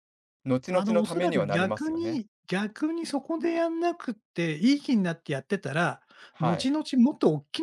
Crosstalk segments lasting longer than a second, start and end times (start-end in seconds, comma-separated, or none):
0.7-2.2